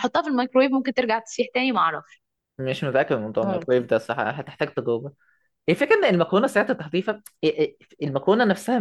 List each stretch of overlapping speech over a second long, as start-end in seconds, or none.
none